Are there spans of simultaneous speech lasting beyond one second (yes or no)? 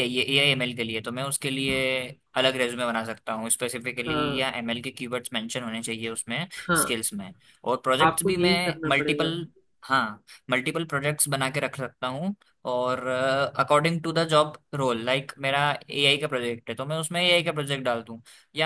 yes